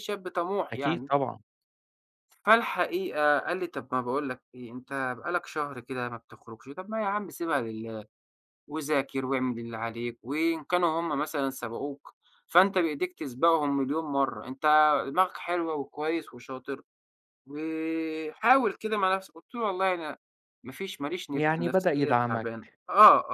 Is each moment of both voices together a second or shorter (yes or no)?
no